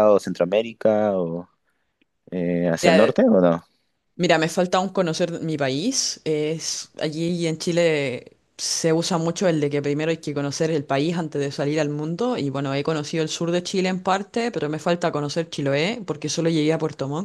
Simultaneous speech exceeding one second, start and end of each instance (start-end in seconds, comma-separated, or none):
none